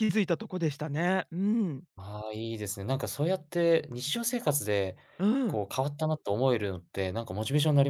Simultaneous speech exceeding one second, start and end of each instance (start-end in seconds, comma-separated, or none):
none